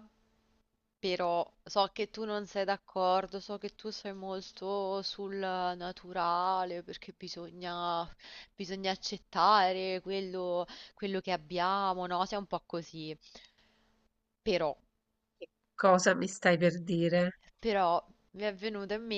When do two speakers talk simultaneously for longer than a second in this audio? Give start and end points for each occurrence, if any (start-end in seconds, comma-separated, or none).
none